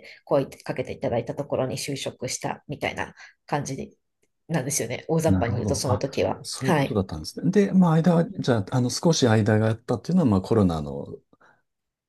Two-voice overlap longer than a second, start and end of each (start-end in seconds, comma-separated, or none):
5.2-7.0